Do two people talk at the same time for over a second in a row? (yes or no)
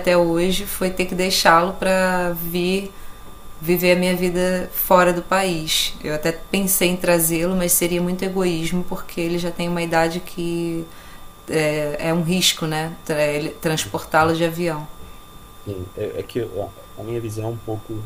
no